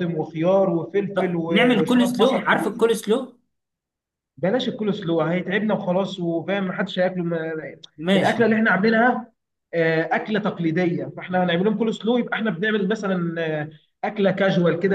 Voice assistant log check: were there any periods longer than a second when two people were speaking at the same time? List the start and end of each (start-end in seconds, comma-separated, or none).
1.1-2.9